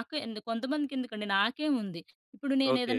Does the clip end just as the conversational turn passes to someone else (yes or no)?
no